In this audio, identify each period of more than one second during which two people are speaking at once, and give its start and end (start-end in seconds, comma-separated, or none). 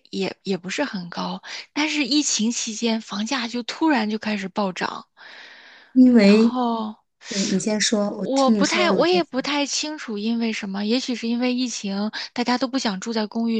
8.1-9.4